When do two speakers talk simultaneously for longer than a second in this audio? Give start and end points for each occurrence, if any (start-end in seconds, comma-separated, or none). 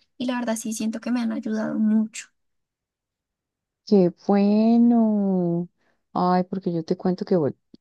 none